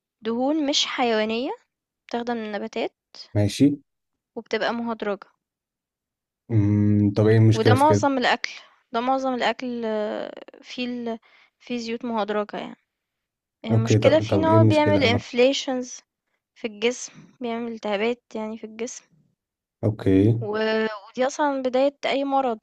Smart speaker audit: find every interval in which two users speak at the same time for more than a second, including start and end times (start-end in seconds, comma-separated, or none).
13.7-15.2